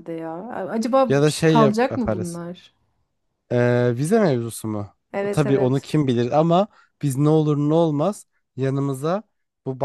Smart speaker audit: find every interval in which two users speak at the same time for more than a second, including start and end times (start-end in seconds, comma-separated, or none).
1.1-2.4